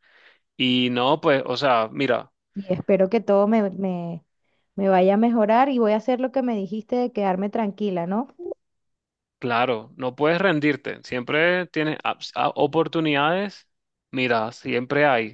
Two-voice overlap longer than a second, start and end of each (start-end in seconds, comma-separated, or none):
none